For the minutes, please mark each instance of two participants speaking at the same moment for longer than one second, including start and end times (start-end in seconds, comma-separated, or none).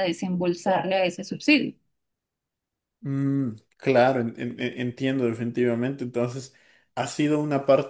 none